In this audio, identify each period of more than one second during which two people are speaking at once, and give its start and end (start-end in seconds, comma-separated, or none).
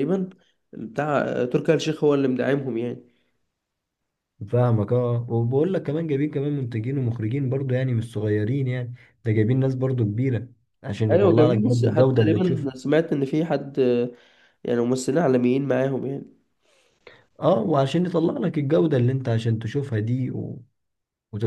11.1-12.7